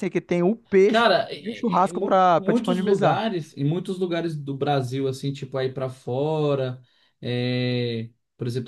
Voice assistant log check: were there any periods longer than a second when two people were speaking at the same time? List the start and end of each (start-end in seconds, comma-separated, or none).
0.9-3.2